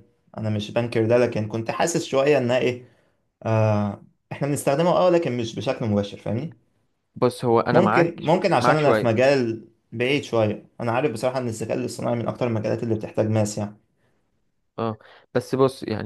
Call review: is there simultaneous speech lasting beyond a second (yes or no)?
yes